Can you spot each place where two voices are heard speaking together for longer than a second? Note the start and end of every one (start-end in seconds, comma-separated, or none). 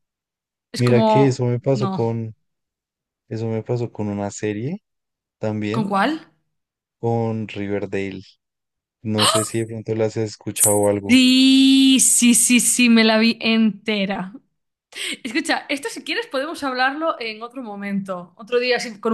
0.8-2.0